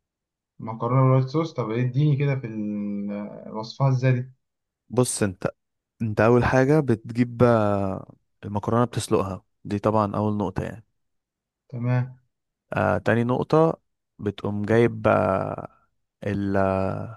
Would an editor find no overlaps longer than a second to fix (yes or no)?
yes